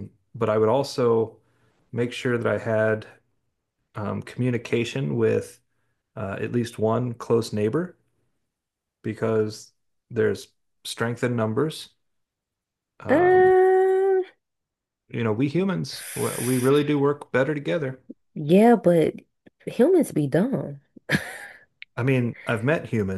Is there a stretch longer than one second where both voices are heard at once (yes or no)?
no